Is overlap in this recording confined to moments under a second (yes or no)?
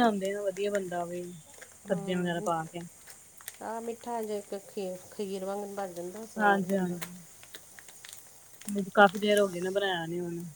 yes